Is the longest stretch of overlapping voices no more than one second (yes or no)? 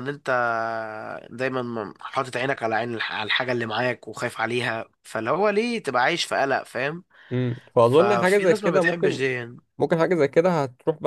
no